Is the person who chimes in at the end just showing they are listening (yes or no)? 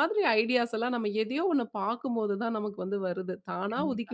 yes